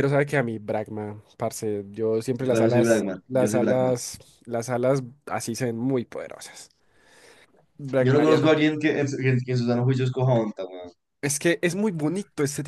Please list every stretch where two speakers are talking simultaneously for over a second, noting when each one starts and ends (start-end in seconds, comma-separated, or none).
2.4-4.0